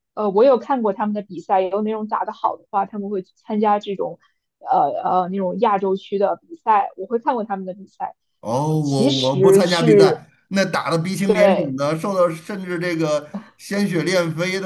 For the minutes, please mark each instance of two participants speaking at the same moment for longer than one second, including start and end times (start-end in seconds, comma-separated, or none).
8.5-10.2